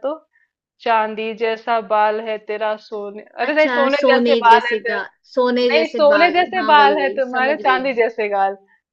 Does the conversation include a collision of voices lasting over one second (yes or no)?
yes